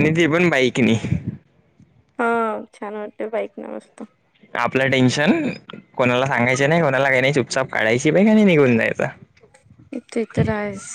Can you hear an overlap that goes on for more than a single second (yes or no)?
no